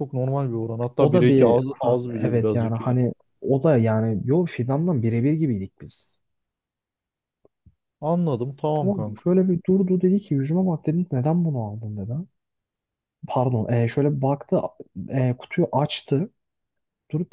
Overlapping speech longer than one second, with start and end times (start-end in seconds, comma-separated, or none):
1.0-3.0